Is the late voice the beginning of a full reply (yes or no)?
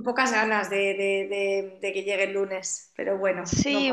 yes